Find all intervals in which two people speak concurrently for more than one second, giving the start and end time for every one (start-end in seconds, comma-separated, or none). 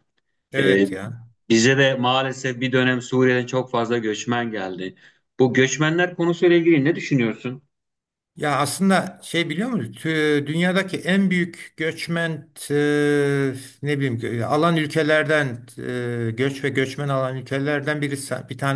none